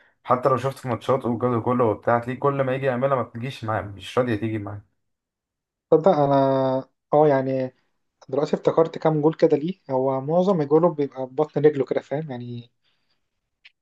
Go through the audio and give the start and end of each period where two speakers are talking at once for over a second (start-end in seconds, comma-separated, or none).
none